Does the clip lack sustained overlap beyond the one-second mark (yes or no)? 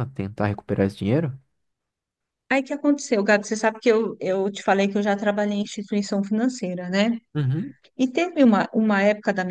yes